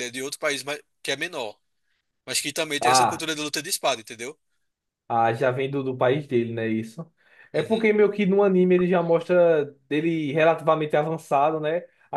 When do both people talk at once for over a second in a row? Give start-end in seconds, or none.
none